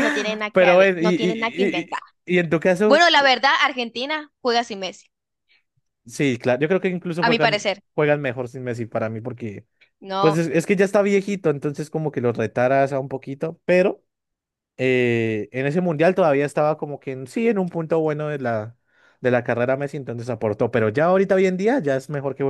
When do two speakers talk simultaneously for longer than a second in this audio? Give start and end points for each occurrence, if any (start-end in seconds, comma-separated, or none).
0.5-2.0